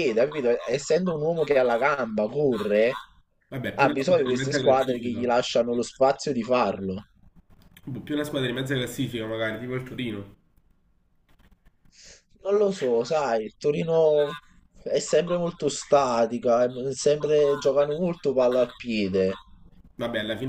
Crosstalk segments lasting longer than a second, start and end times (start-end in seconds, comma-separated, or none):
3.8-5.3